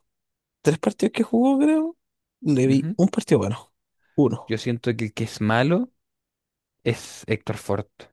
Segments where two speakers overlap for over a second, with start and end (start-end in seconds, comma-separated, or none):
none